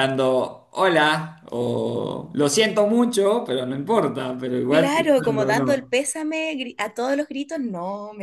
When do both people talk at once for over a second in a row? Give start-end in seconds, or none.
4.7-5.9